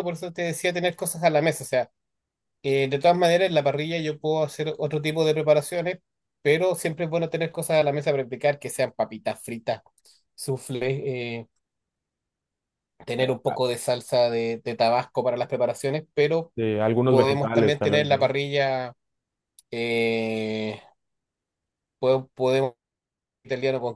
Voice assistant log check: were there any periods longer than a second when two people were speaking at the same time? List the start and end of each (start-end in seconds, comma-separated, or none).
17.1-18.3